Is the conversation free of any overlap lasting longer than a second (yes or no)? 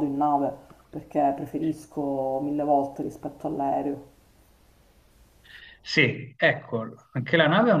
yes